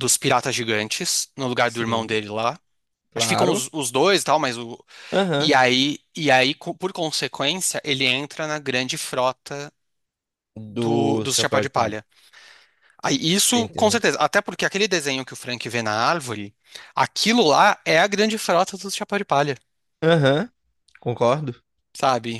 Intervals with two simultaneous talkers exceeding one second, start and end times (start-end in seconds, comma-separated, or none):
10.7-11.9